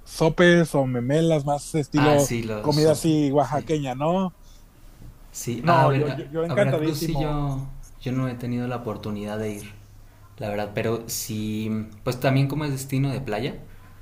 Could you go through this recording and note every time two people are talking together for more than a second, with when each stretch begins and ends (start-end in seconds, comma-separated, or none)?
1.9-3.7, 5.6-7.4